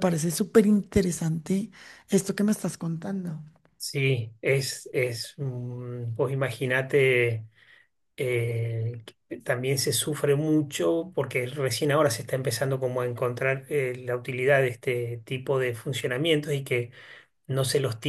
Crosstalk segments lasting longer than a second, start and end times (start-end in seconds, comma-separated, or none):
none